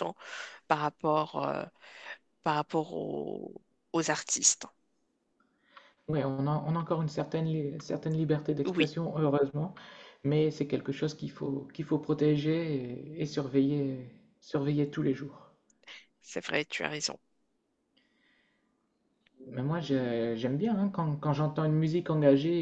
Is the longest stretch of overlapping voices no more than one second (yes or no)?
yes